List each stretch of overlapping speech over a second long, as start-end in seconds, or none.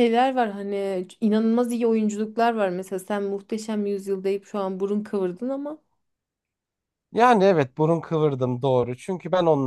none